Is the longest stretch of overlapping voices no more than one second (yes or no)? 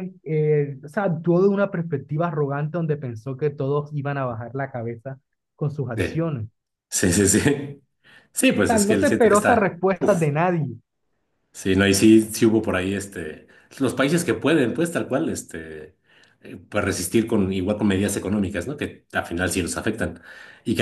no